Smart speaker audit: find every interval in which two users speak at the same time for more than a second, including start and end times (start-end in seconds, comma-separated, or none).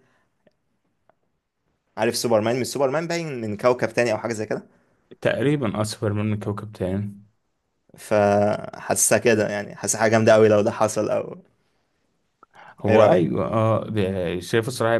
none